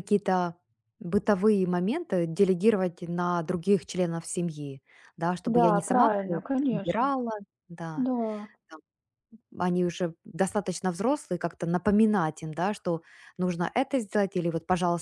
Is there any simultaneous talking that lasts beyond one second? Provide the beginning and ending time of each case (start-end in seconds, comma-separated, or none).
5.5-7.1